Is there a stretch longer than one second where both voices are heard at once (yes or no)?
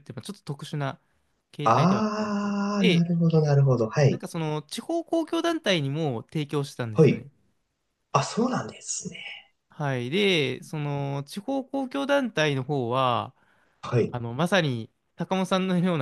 yes